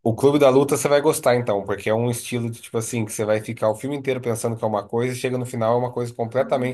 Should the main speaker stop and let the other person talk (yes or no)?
no